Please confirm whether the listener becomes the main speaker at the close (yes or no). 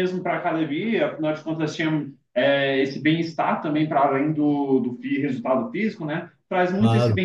no